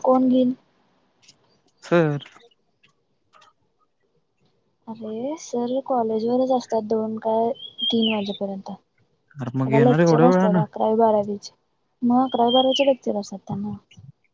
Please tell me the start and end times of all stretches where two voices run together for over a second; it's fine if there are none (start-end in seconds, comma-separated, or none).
9.4-10.6